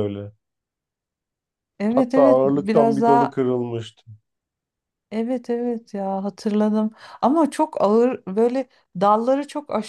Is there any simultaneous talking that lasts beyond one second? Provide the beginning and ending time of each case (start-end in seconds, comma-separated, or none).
1.9-3.4